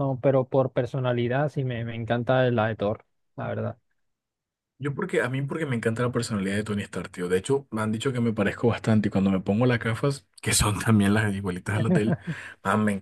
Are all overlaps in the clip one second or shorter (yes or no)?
yes